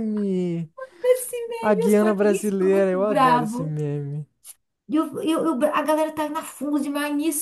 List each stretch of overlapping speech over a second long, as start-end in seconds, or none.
1.6-3.7